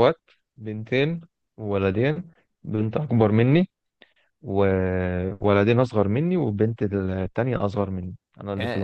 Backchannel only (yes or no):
no